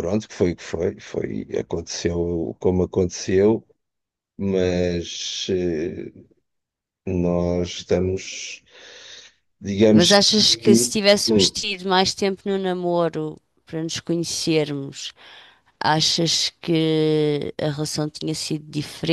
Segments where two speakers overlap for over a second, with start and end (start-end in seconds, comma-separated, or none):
9.9-11.6